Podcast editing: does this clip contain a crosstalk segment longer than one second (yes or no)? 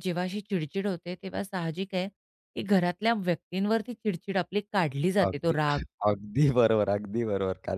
no